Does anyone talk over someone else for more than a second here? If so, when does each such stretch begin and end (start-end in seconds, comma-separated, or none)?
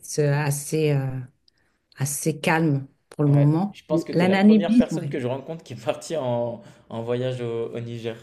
3.3-5.1